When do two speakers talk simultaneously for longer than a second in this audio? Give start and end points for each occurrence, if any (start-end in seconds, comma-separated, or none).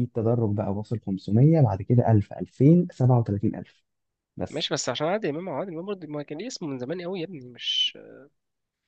none